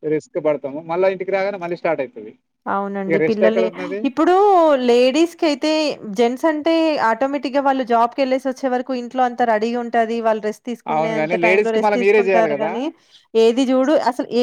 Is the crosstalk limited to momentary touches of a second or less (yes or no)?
no